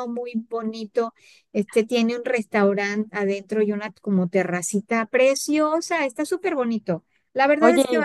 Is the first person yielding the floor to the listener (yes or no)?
no